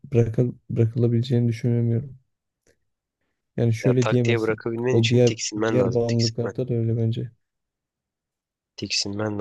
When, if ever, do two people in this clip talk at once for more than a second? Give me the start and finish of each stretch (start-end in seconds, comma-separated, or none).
3.8-6.5